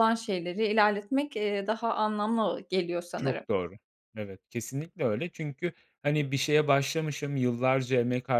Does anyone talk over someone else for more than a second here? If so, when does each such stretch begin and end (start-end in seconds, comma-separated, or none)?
none